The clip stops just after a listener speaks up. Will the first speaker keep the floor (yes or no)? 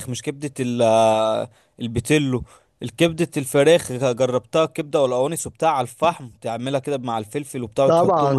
no